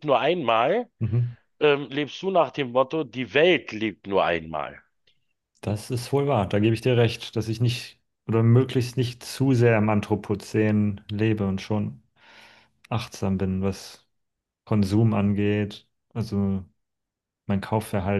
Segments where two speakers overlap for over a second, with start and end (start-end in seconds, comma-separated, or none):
none